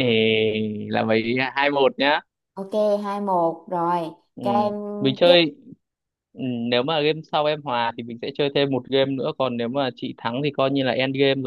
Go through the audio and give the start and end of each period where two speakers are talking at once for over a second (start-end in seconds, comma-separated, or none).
none